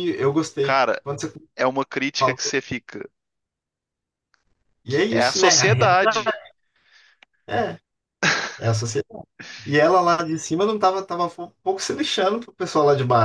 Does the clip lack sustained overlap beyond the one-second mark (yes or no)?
no